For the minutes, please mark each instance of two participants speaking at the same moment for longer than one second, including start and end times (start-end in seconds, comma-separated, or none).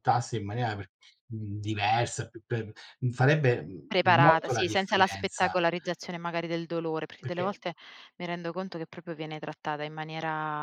3.9-5.6